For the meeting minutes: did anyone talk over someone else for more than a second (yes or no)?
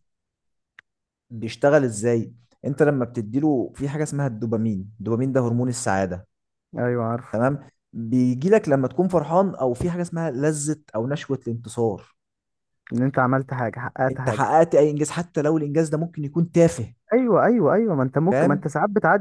no